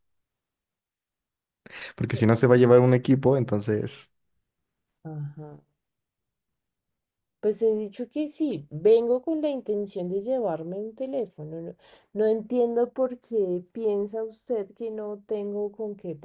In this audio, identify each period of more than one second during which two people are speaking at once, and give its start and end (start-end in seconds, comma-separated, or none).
none